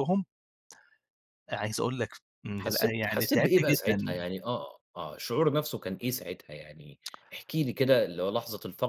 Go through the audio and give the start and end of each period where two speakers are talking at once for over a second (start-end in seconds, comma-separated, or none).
2.6-4.3